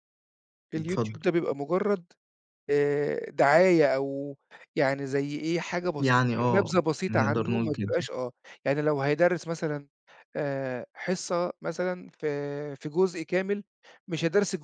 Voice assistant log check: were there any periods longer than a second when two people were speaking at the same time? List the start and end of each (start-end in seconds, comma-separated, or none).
6.0-8.1